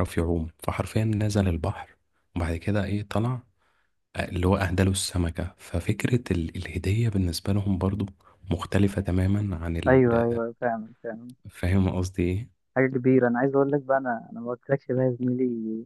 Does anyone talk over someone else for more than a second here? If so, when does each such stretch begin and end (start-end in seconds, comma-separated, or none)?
none